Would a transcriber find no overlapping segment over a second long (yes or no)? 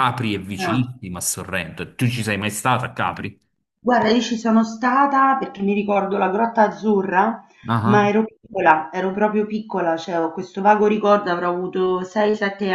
yes